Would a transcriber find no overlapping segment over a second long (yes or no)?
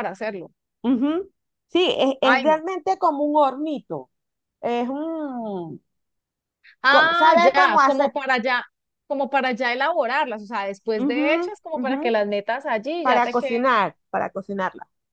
no